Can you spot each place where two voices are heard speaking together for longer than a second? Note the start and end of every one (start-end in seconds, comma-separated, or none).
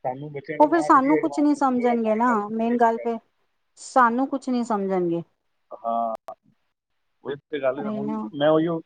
0.6-3.1